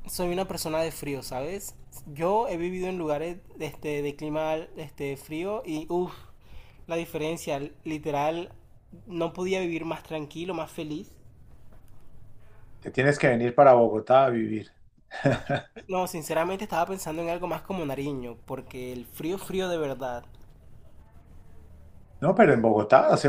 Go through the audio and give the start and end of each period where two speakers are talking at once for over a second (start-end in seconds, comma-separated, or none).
none